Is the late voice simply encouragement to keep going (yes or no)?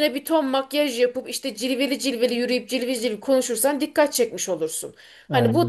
yes